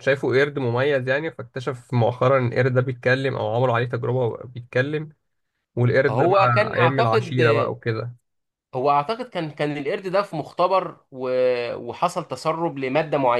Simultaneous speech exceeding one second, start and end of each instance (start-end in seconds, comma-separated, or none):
6.1-7.4